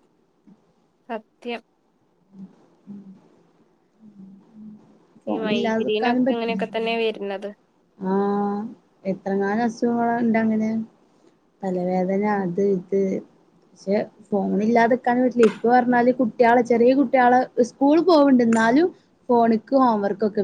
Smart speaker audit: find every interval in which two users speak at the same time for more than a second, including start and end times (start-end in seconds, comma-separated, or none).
5.3-6.6